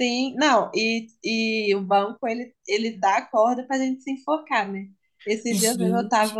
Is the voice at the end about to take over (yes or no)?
no